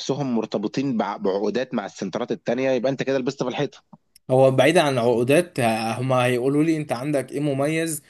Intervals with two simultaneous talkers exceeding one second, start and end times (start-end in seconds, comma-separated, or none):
none